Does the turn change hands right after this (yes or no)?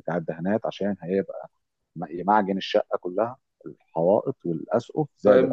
yes